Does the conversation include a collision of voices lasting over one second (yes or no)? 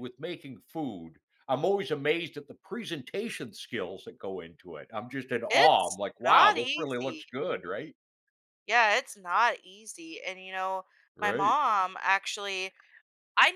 yes